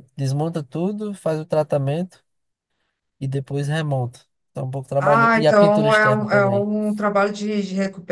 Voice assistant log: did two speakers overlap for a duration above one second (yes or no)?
yes